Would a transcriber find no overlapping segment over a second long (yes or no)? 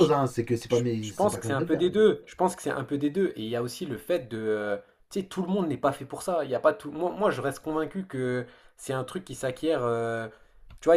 no